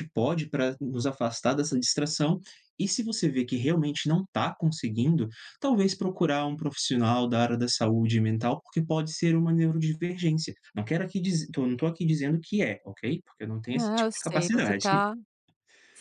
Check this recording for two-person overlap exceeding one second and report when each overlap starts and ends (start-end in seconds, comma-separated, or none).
13.7-15.0